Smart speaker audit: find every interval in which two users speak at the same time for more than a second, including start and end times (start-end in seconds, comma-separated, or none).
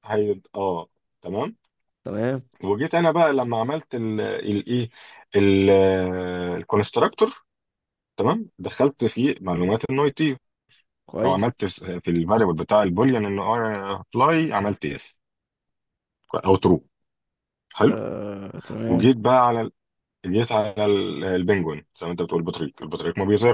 none